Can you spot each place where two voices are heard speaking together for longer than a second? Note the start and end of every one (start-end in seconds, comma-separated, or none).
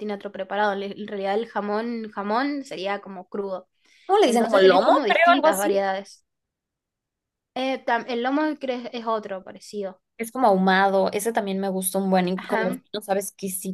4.2-5.8